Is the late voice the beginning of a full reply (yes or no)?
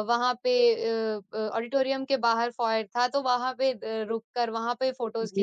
yes